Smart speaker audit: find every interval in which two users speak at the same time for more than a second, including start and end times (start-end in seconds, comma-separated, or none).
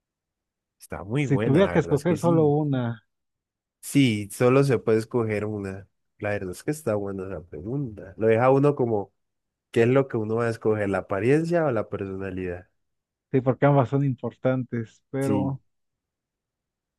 1.2-2.5